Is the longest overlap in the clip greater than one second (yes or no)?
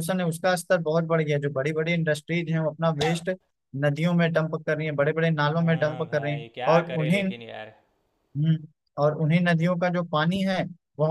yes